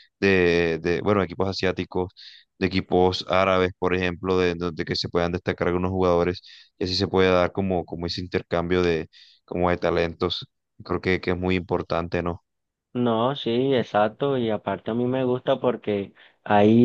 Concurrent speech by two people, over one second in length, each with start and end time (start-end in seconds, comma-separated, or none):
none